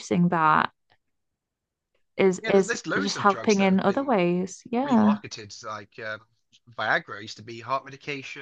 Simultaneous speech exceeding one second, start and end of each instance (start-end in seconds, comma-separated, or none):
2.4-4.2